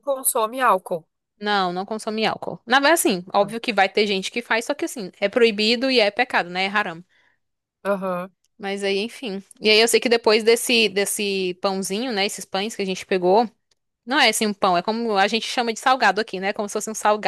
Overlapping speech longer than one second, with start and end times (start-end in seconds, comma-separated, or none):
none